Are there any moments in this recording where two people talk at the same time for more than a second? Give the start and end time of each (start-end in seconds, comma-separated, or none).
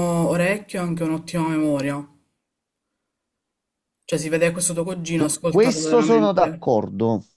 5.1-6.6